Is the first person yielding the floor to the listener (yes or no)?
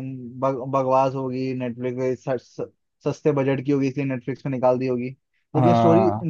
no